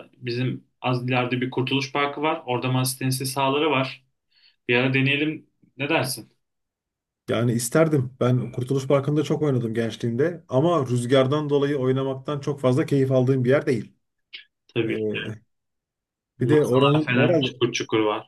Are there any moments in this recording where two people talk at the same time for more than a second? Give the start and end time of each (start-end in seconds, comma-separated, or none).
16.4-17.6